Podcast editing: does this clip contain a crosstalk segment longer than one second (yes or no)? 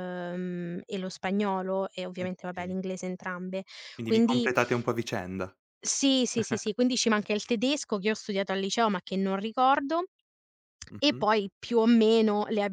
no